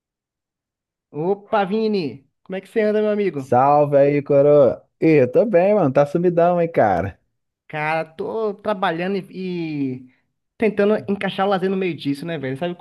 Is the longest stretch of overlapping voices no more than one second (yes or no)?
yes